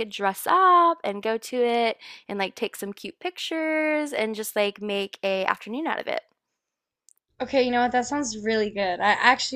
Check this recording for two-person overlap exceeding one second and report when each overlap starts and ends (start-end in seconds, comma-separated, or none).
none